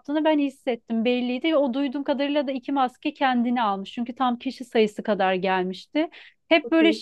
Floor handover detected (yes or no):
no